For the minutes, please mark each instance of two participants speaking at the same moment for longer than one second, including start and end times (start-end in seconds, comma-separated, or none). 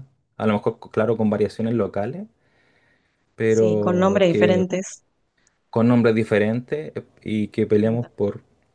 3.5-4.7